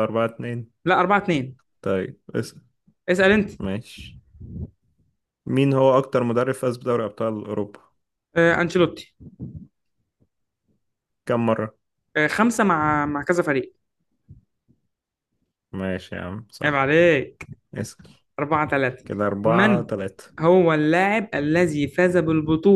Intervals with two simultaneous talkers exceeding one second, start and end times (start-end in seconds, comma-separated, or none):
none